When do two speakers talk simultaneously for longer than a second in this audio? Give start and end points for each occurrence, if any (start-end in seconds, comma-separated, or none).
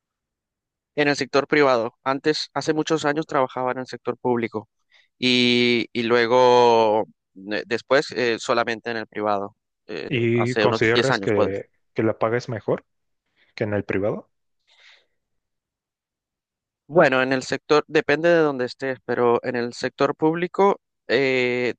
10.1-11.6